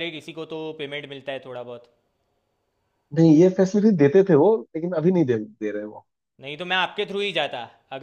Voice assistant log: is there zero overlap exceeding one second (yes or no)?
yes